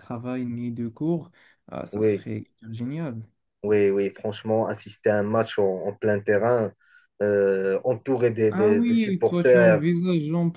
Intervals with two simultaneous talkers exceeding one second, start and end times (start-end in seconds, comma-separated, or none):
8.5-9.8